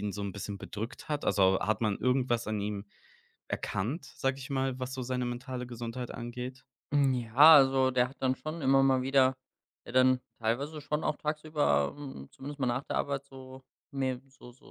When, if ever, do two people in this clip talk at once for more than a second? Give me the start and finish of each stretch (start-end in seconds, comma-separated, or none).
none